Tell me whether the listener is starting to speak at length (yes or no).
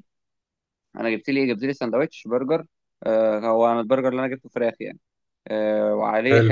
no